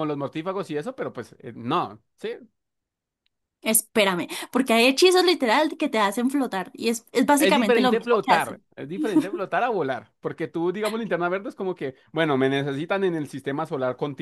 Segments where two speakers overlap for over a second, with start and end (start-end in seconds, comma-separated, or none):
7.4-8.6